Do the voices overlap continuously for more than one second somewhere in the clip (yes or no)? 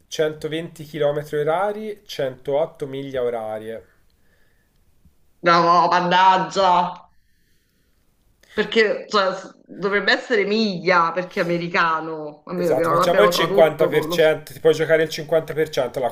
yes